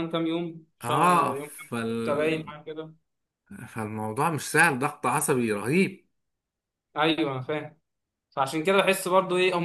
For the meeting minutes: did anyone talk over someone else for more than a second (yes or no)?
yes